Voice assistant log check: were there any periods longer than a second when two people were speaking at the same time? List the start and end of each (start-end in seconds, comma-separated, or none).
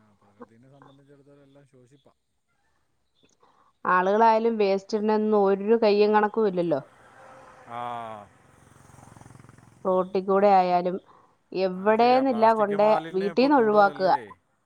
11.8-14.0